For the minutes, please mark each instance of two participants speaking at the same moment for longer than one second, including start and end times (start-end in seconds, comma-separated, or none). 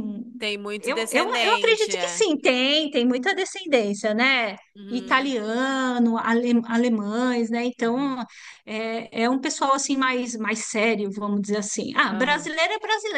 0.8-2.2